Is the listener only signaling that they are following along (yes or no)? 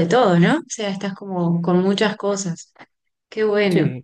yes